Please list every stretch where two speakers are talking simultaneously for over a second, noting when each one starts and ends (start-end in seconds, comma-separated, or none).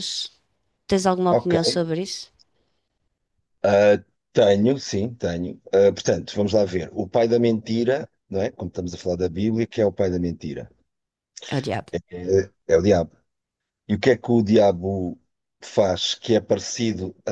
none